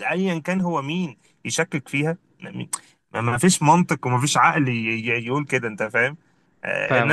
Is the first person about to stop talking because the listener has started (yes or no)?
no